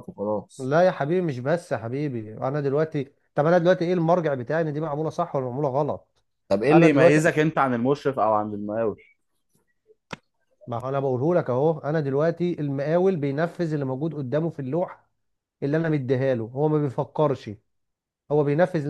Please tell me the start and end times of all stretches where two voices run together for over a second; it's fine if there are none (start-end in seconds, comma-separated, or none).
none